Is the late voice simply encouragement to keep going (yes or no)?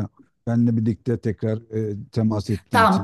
no